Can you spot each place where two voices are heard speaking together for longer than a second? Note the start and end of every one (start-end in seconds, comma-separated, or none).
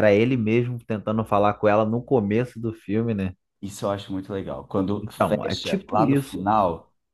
5.0-6.5